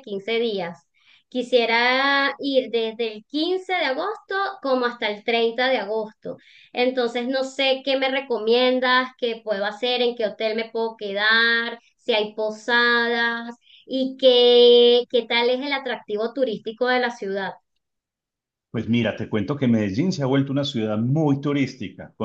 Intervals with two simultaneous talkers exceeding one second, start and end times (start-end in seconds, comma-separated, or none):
none